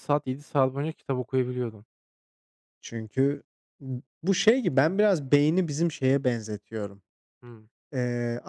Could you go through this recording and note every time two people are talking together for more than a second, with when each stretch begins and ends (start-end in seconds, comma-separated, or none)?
none